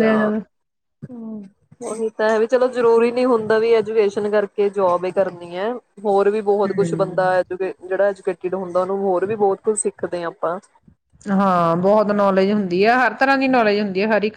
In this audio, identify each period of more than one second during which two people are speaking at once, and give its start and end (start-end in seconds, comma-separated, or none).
none